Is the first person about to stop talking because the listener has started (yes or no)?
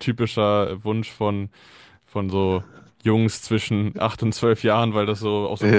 yes